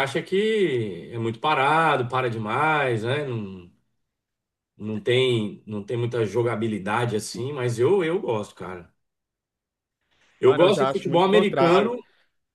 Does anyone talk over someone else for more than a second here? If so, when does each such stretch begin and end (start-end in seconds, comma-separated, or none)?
10.4-12.0